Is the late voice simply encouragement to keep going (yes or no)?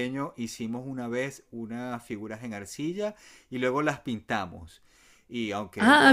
yes